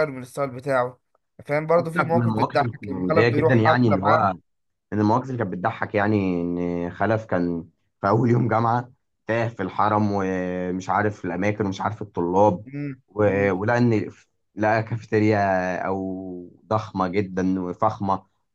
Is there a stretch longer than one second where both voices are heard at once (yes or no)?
yes